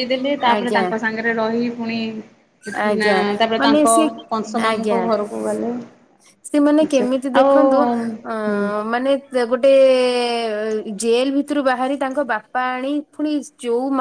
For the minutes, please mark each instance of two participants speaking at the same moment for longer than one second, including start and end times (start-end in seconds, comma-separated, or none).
none